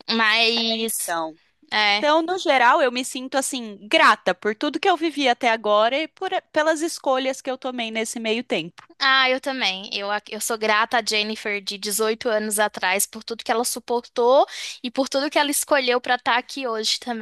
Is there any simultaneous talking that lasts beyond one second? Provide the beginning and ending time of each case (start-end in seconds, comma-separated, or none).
none